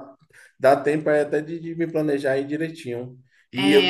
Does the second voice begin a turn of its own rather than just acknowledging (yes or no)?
yes